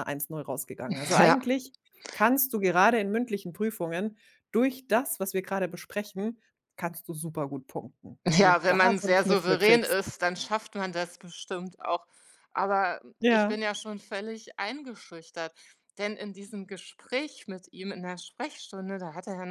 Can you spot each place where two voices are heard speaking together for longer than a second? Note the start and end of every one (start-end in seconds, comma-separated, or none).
8.3-10.1